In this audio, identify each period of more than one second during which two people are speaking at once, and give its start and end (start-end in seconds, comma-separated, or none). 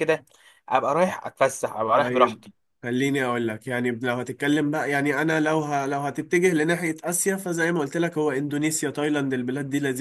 none